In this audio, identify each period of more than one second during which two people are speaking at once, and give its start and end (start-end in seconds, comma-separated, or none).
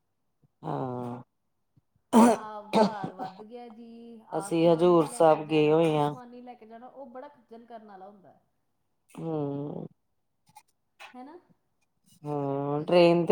4.4-6.1